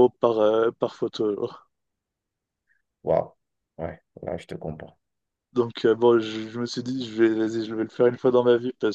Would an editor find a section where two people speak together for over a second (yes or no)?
no